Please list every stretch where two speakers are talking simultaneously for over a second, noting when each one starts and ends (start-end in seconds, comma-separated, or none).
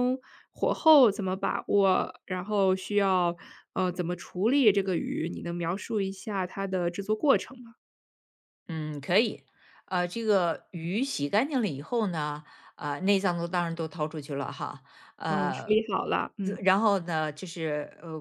none